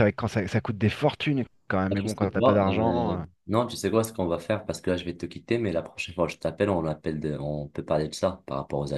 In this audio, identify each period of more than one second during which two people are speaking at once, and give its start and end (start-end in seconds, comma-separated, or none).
1.9-3.2